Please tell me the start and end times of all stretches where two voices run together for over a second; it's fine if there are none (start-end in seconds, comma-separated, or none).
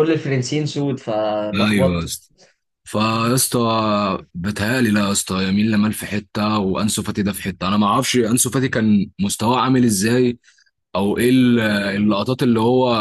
none